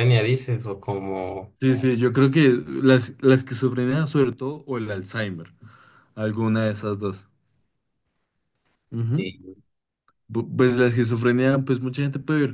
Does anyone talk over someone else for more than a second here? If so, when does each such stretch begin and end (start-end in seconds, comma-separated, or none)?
none